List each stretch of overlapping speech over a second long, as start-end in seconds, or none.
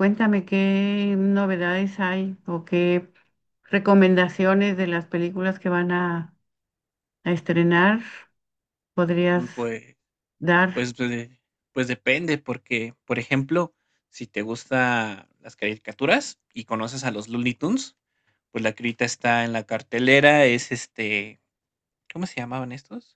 none